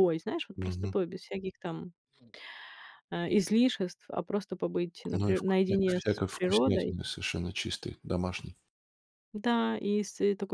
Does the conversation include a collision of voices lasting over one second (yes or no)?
yes